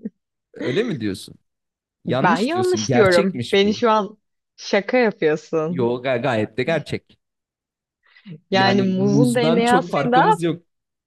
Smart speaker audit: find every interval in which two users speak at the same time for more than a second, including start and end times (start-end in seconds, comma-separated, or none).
2.1-3.8, 8.5-10.4